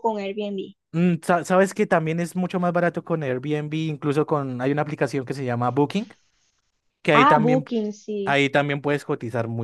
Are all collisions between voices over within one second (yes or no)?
yes